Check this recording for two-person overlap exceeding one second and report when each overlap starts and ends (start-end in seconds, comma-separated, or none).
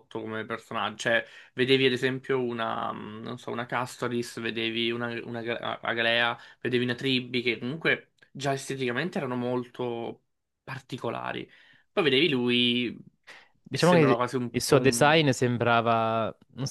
13.7-15.2